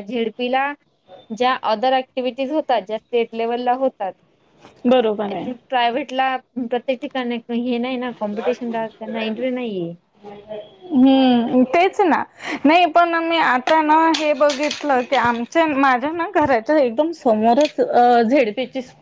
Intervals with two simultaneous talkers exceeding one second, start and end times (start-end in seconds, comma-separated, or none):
none